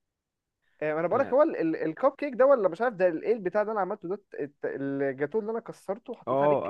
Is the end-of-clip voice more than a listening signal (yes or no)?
yes